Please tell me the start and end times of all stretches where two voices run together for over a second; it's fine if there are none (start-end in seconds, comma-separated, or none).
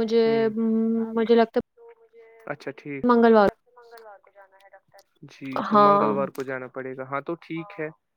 none